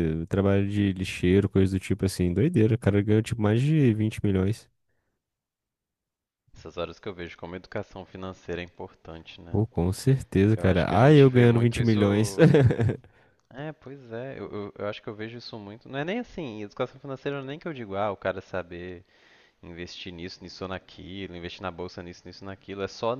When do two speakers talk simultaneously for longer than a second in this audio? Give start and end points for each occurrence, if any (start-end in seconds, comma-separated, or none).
10.6-12.0